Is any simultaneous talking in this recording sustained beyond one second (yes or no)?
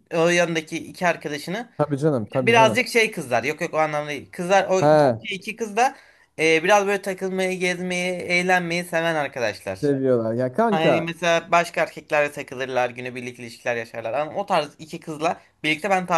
no